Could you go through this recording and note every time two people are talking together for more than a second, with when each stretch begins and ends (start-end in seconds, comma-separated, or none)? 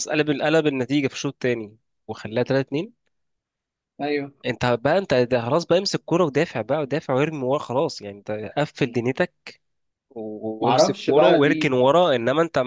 10.6-11.9